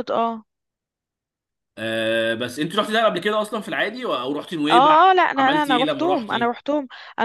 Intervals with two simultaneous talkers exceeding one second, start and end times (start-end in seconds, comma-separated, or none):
4.7-6.6